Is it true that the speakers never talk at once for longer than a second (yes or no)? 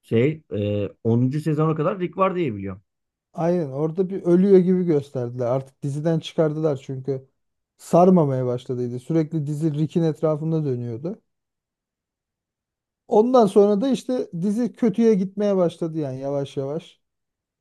yes